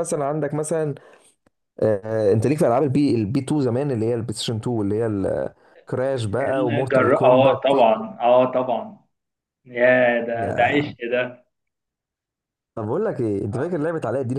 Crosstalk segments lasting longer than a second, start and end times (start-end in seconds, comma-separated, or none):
6.4-8.0